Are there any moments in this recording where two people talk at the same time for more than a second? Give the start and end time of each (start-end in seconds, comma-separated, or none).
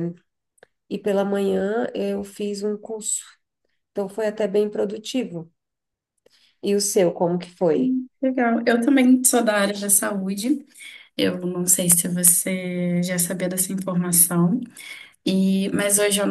none